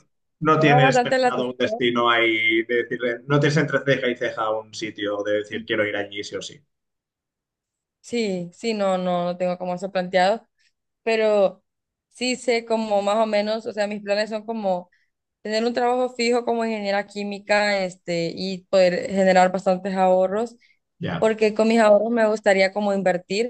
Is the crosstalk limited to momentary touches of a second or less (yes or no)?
no